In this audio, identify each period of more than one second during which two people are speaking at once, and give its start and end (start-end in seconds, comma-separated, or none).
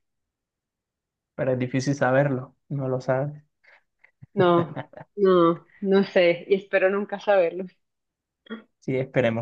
none